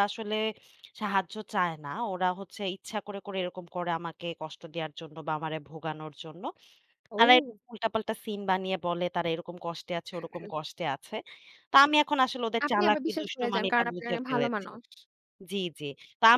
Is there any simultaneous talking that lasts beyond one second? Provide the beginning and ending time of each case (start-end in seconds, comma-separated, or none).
12.7-14.7